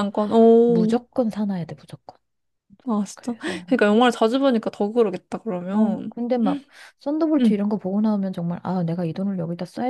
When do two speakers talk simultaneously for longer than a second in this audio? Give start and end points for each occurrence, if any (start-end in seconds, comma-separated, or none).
none